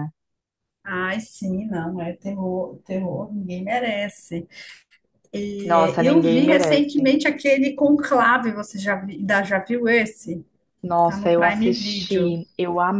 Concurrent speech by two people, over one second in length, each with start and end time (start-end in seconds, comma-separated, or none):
5.6-7.1, 11.0-12.3